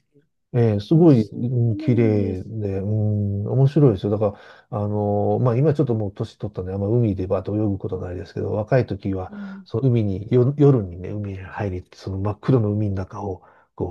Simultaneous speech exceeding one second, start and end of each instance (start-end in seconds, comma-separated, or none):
1.1-2.5